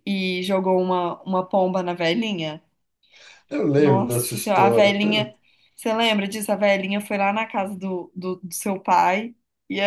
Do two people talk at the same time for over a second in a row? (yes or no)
yes